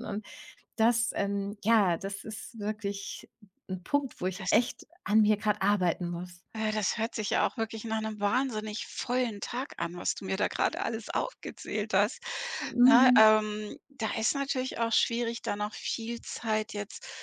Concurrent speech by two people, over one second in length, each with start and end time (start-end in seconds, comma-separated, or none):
none